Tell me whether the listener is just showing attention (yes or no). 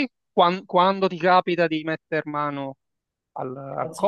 yes